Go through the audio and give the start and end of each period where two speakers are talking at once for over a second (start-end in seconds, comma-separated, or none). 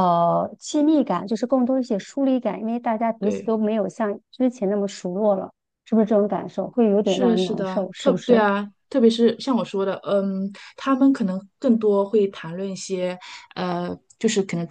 7.0-8.5